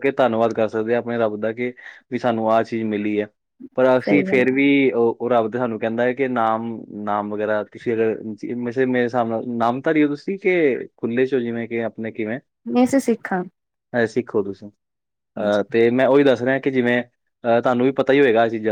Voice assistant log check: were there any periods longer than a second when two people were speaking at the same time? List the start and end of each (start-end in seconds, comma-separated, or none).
none